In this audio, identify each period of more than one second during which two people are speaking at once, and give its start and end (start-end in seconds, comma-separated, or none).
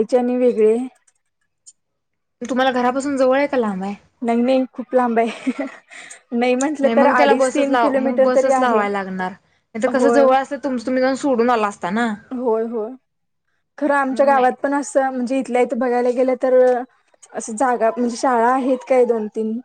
6.8-8.8